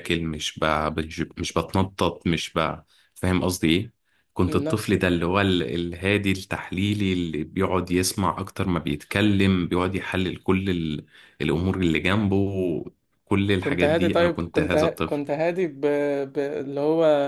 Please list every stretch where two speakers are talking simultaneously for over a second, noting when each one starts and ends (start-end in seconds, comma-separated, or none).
13.6-15.2